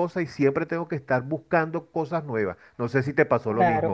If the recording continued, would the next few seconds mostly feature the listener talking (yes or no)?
yes